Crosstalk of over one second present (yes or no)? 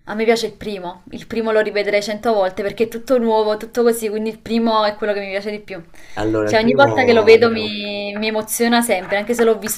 yes